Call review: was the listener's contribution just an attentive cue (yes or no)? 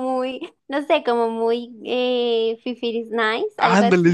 no